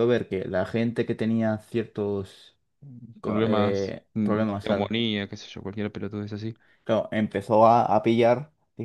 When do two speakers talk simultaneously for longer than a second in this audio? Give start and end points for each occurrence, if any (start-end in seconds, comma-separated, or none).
3.2-4.9